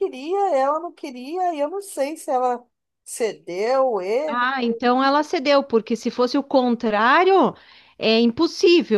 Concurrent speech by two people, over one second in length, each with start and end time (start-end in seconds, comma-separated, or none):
none